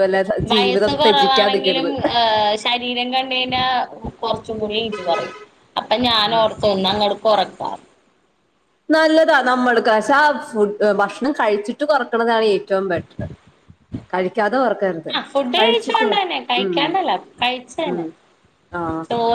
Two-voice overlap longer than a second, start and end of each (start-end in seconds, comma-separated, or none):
0.5-1.9